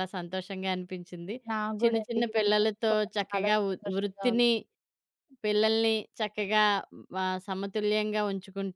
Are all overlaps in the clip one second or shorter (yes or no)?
no